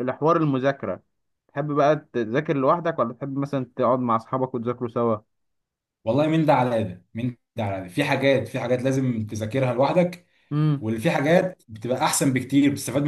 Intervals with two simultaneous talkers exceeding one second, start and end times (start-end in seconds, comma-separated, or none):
none